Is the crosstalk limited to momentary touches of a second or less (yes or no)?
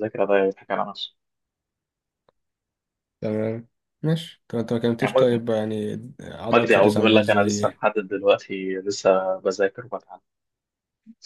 no